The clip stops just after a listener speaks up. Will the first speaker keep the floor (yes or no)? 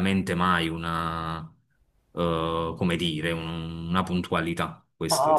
no